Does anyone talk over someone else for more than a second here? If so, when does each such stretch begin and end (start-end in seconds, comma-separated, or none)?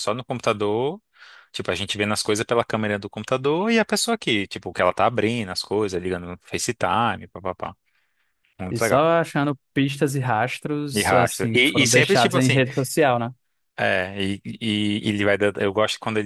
10.9-12.6